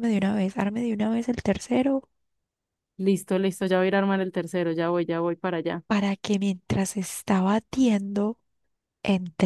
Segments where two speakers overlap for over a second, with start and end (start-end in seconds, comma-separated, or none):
none